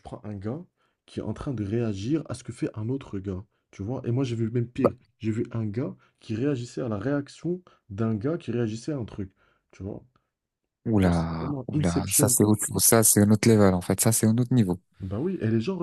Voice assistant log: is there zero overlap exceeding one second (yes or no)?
no